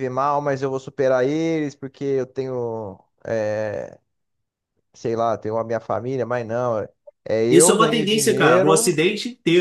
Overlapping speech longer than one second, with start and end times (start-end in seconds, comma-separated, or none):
7.5-9.0